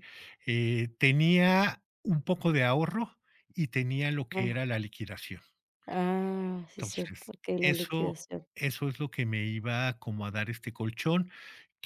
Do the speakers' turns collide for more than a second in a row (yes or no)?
yes